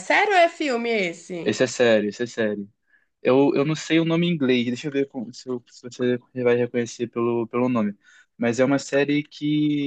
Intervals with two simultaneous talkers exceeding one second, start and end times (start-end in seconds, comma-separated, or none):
none